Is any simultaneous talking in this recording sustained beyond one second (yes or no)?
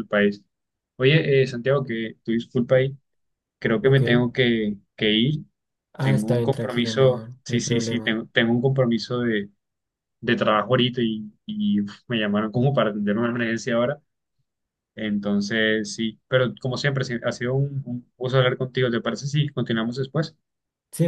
yes